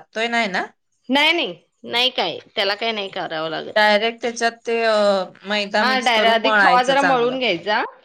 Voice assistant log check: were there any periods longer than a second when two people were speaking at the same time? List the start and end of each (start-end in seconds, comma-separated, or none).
5.8-7.4